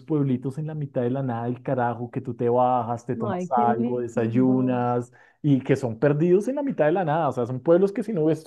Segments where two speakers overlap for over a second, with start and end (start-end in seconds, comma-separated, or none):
3.3-4.8